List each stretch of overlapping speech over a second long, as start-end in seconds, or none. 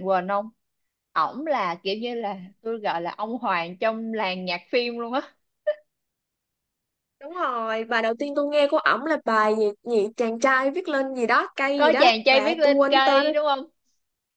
11.8-13.3